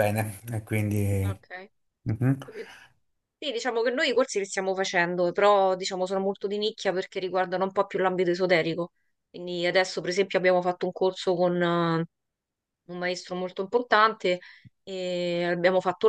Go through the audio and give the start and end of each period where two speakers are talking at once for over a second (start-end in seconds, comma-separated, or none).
none